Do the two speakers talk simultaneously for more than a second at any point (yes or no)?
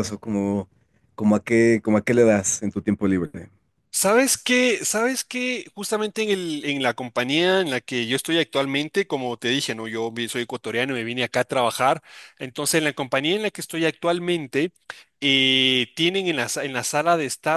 no